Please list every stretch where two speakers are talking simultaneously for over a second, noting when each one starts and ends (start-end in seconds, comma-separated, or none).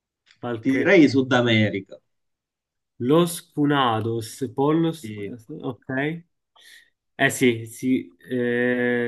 none